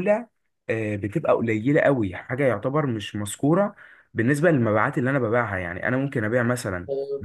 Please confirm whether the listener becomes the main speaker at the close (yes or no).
no